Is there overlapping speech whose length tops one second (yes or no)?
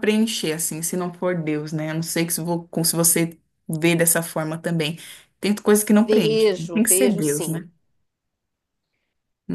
yes